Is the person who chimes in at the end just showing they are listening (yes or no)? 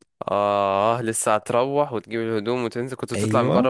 no